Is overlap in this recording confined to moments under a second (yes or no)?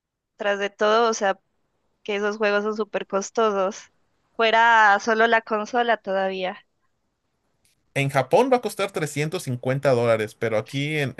yes